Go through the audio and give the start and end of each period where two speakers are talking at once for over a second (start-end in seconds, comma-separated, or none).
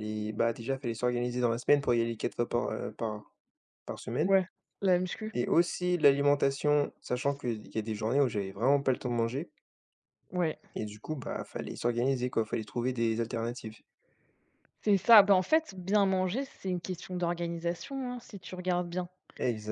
none